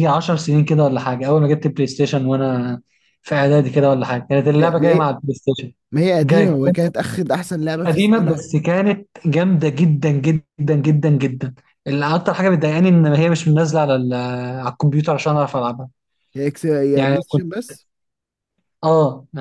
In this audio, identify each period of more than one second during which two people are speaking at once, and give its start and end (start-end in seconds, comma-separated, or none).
none